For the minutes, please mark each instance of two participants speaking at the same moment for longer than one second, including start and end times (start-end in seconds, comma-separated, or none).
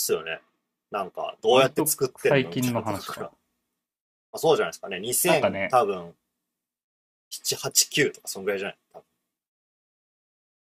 1.5-3.3